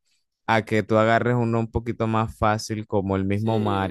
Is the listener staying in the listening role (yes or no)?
no